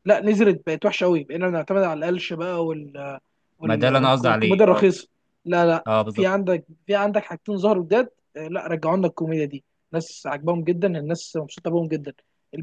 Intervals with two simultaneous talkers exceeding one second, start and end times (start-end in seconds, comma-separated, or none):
3.7-4.9